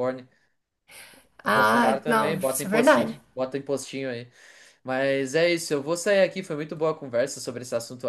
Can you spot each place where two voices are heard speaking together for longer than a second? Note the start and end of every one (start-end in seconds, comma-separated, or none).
1.5-3.2